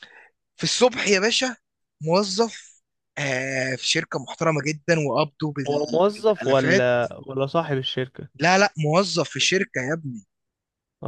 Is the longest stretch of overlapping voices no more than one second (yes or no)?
no